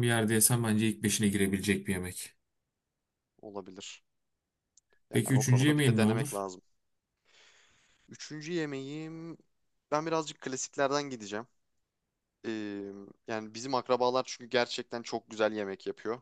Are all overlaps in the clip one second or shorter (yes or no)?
no